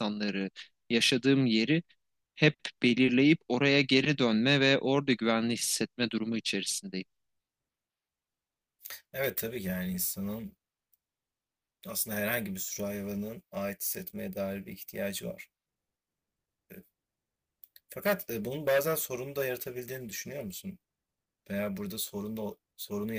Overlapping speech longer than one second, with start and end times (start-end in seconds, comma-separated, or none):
none